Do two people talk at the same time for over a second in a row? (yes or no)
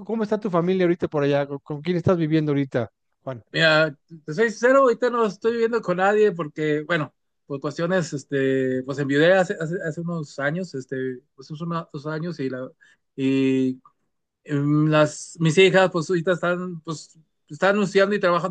no